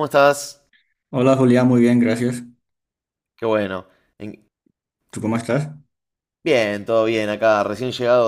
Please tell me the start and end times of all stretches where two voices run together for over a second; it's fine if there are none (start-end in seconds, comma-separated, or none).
none